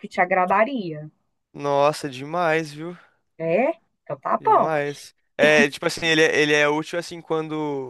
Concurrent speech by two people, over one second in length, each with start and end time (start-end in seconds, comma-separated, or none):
none